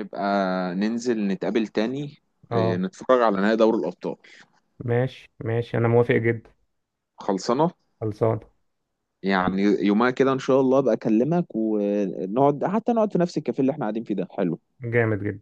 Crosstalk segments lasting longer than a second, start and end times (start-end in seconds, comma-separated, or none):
none